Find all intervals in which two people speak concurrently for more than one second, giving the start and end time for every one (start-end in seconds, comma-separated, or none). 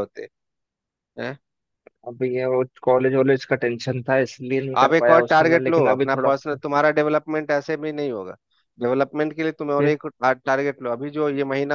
4.8-6.6